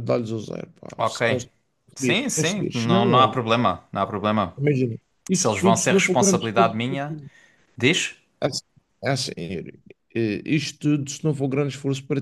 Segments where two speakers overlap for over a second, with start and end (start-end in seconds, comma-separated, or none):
1.9-3.4, 5.3-7.2